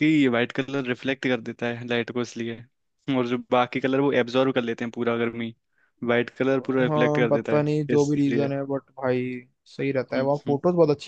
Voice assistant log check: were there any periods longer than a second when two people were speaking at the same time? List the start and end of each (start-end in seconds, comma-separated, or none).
6.5-8.5